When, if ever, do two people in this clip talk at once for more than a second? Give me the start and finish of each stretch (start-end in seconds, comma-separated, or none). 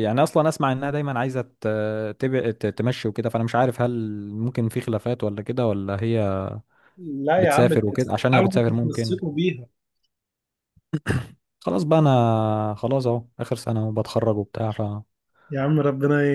7.4-9.2